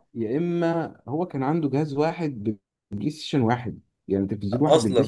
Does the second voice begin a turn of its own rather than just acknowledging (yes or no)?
no